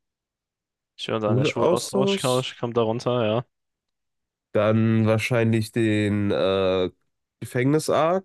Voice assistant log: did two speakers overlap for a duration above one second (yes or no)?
yes